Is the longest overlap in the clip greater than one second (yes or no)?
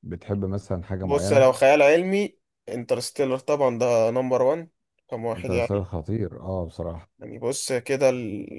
no